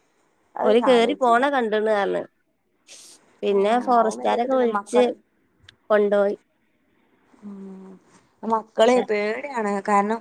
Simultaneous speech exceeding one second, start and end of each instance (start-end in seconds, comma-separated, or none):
3.5-5.0